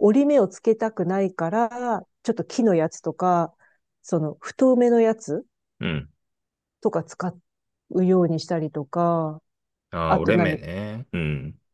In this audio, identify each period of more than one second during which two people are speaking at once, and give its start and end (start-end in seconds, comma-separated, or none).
none